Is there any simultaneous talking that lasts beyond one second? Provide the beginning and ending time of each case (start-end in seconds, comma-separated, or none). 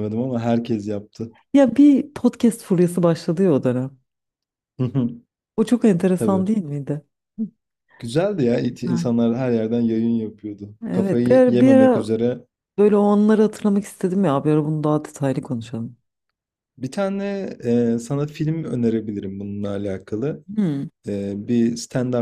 10.9-12.1